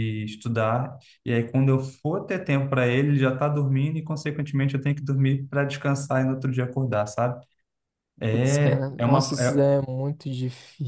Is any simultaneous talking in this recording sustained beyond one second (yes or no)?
yes